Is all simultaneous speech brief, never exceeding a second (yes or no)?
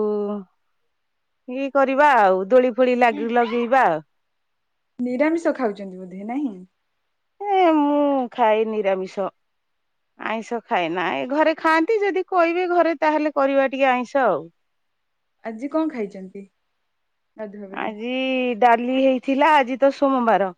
yes